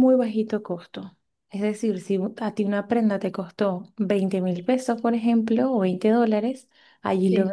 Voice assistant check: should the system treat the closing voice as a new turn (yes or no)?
no